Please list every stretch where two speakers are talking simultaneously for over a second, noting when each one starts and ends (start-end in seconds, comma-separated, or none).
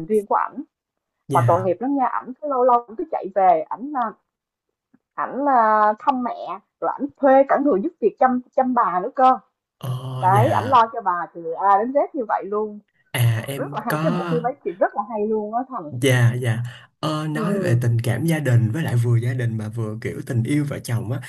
none